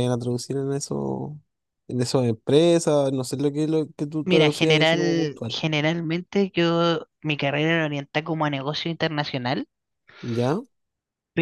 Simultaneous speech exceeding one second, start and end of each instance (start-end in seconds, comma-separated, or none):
4.2-5.6